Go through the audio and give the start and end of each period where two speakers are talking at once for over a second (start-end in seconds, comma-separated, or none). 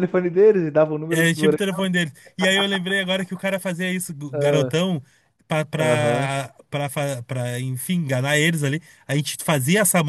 none